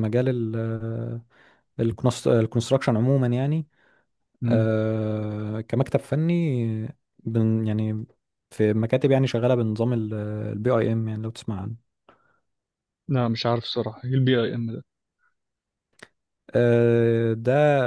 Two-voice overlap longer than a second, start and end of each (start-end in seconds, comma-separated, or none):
none